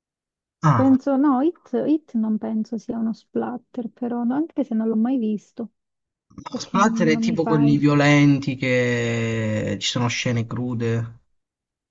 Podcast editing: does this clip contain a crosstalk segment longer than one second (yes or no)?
yes